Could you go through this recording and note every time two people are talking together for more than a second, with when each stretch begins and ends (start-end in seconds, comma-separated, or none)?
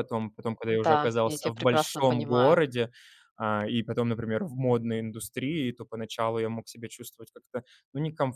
0.8-2.6